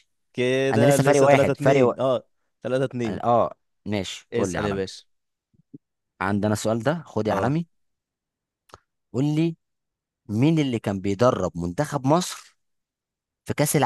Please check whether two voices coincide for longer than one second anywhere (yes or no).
yes